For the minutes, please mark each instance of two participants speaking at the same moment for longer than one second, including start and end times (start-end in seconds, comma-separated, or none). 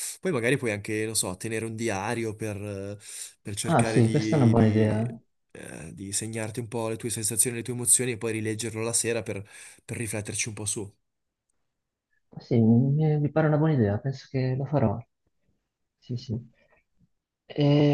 3.6-5.0